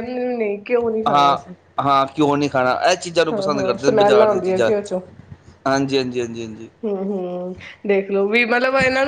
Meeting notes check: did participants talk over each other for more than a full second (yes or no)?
yes